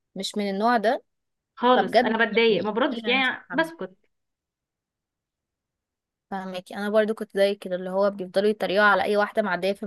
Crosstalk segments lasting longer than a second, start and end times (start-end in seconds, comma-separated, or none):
1.8-3.7